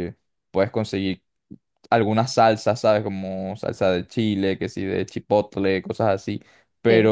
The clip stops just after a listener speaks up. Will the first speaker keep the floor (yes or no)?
yes